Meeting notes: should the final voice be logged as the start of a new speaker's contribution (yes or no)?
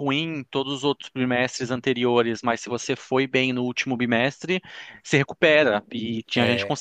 no